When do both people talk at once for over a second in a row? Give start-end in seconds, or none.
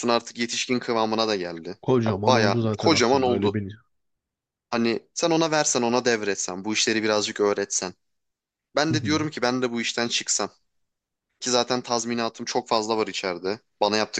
1.8-3.6